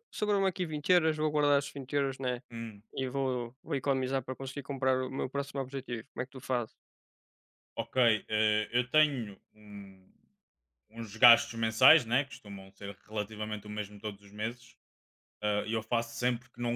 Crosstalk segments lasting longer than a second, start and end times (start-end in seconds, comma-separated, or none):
none